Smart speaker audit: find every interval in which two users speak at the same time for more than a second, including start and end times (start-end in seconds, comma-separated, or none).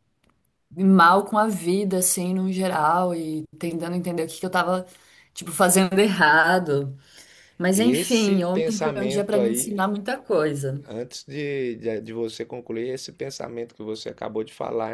7.7-9.8